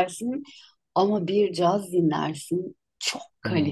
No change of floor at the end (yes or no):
no